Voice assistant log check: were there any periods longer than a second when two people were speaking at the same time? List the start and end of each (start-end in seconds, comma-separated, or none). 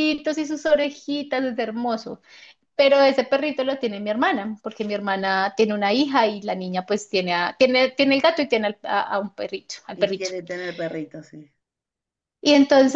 none